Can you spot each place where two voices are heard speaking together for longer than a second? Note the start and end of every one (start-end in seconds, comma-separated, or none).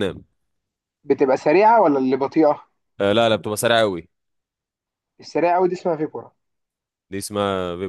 none